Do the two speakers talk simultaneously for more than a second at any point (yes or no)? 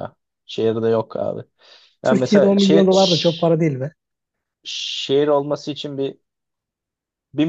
yes